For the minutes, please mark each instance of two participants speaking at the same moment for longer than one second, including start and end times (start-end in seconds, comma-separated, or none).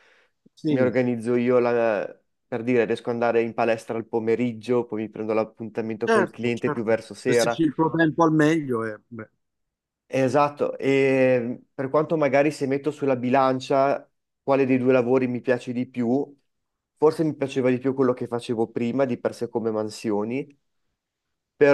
6.1-7.6